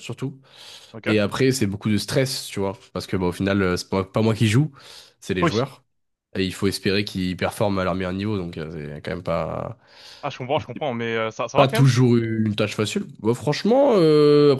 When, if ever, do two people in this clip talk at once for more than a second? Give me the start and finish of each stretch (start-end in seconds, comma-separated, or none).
none